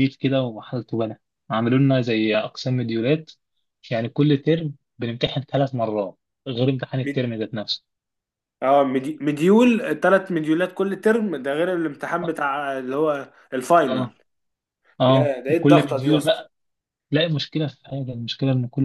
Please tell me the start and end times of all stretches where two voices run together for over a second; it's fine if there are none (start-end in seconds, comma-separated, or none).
15.1-16.4